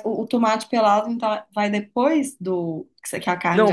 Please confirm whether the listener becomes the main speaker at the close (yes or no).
yes